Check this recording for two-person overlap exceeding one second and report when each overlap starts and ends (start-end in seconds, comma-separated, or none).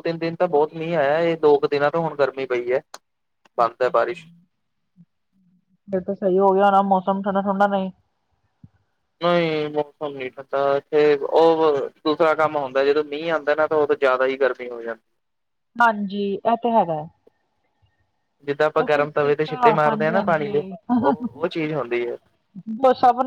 18.8-20.6